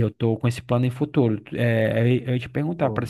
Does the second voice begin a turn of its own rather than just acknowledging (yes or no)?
no